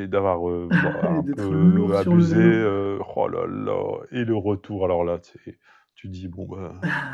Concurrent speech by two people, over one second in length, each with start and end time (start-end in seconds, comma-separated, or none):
1.1-2.6